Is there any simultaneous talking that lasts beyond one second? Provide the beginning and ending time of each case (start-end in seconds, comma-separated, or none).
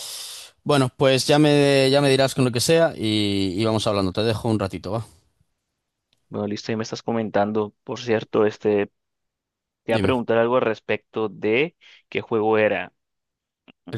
none